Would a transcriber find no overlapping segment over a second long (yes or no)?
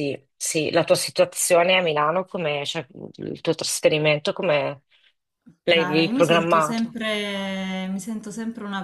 no